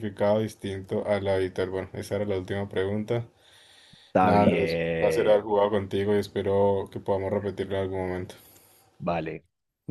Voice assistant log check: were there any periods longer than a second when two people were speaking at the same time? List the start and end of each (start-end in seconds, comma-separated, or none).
4.2-5.5